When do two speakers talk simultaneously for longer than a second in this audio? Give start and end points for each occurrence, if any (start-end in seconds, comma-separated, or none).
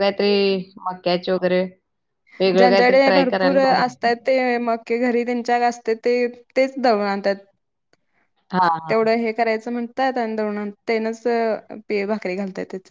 2.6-4.1